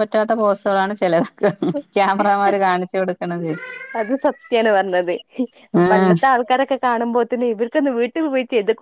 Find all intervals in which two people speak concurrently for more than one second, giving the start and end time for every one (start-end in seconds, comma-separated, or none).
none